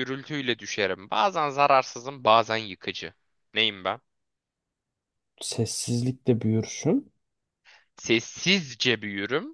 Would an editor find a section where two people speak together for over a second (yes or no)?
no